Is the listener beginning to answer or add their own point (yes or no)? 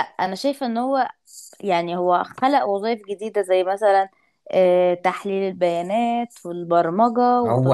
yes